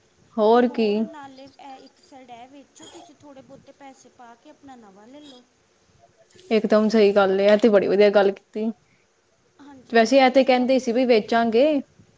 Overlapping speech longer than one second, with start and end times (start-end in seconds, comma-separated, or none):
9.9-11.6